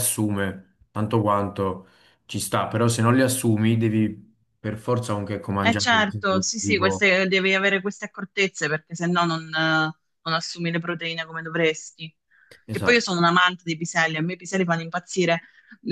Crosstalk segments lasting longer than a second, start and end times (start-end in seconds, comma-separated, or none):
5.6-7.1